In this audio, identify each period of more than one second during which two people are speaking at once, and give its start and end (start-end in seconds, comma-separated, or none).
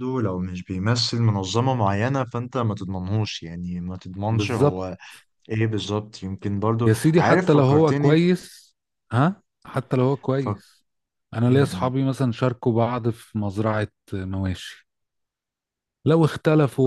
6.8-8.2